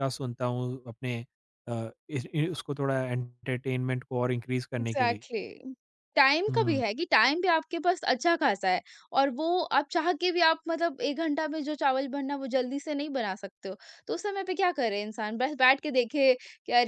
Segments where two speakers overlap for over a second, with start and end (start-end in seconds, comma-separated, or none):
none